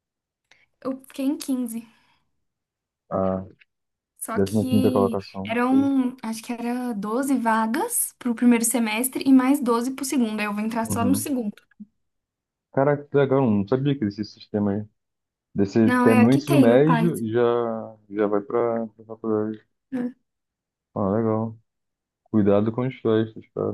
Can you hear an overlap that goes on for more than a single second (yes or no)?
yes